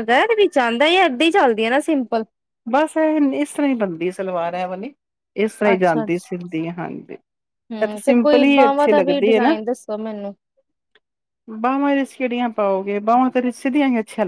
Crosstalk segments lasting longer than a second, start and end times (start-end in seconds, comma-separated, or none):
7.7-9.6